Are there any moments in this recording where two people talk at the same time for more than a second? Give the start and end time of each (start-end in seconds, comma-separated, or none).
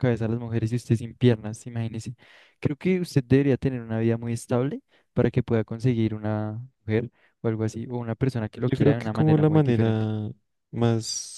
8.6-10.1